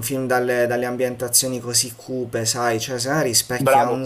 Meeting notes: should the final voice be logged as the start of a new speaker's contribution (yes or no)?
no